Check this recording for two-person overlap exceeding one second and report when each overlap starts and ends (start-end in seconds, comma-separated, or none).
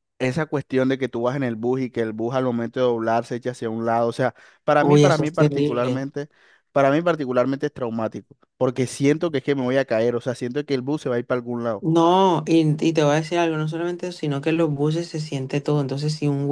4.8-6.1